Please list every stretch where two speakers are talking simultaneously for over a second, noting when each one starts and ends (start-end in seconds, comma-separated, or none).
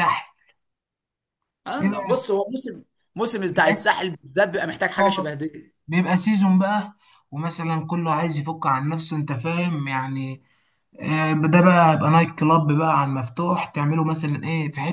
none